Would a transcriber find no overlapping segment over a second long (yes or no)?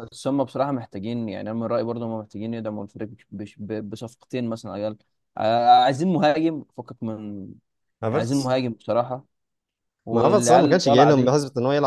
no